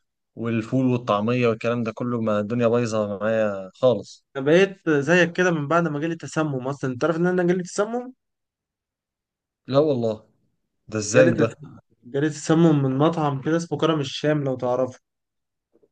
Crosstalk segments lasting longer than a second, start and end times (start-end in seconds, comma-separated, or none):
none